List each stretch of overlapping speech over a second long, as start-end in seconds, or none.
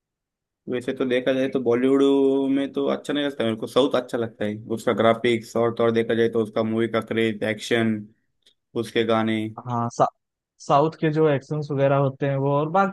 none